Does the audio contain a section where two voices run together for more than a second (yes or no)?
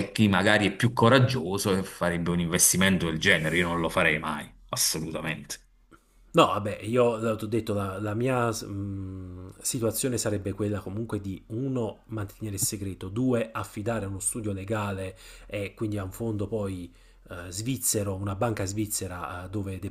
no